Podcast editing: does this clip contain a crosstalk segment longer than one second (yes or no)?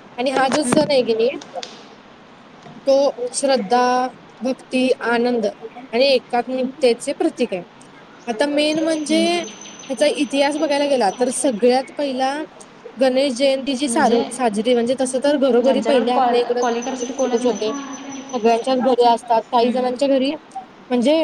yes